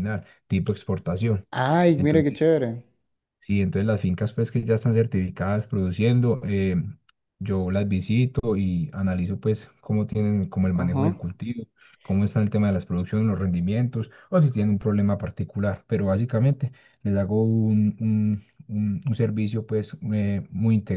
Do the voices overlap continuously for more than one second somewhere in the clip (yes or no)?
no